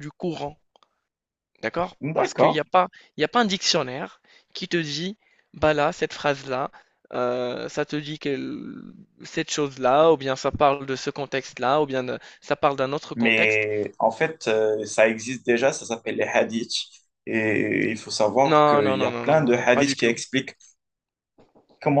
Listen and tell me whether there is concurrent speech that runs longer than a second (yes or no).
yes